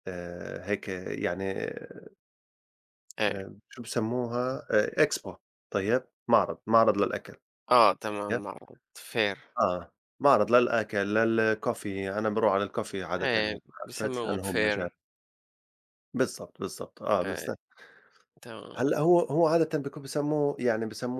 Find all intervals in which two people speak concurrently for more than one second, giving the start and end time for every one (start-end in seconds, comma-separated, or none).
13.2-14.9